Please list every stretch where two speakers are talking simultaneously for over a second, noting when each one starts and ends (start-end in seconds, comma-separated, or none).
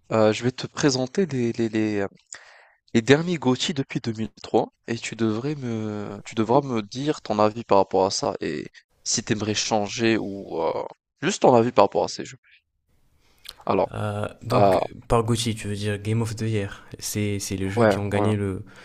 none